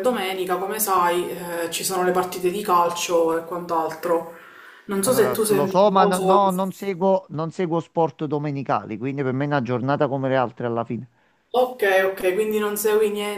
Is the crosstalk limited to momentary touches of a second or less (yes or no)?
no